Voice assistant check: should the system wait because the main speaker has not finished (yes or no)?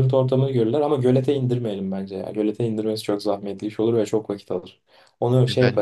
yes